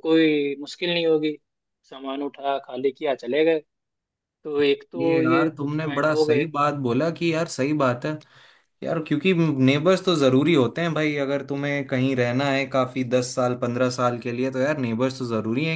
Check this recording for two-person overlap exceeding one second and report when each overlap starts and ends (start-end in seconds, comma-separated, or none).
5.0-6.5